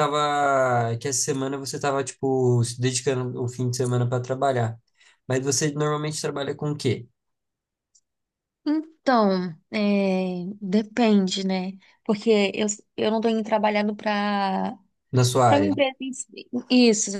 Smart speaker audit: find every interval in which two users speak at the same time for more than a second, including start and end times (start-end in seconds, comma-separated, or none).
none